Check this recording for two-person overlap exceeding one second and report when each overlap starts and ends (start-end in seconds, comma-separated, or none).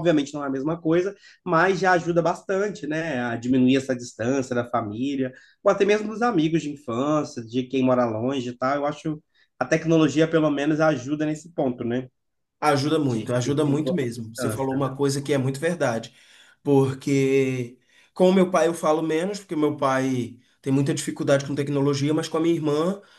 13.0-14.8